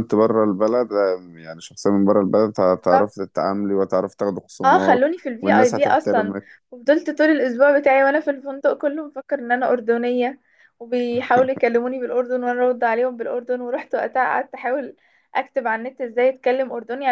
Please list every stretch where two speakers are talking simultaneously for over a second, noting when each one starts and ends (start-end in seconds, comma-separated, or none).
4.6-6.3